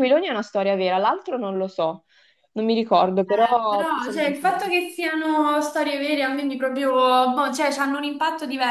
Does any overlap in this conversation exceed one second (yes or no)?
yes